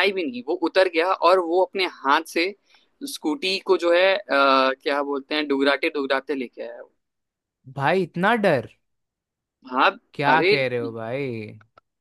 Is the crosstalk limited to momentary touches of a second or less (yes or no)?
yes